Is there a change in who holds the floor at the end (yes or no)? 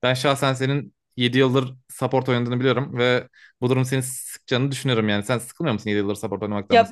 yes